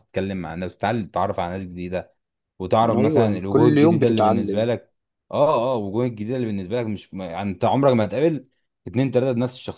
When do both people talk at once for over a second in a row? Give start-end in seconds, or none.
2.9-4.7